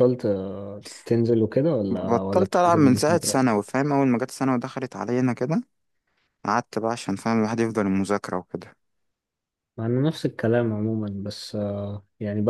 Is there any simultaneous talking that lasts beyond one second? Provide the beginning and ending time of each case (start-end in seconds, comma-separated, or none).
1.9-3.6